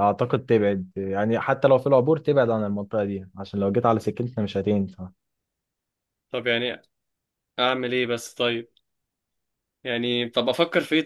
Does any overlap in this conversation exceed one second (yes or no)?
no